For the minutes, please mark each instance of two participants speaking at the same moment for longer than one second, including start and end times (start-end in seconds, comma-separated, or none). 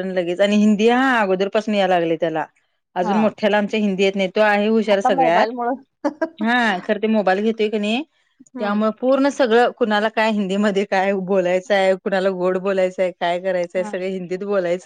none